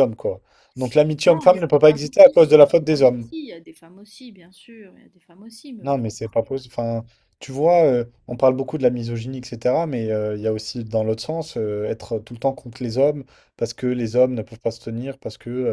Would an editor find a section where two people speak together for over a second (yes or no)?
yes